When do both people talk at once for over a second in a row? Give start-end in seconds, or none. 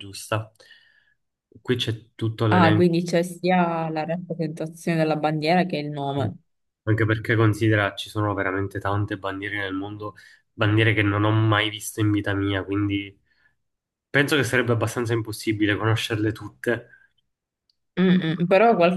none